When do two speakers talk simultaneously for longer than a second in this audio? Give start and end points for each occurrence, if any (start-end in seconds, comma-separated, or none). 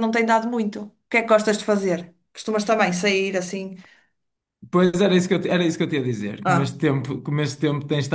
none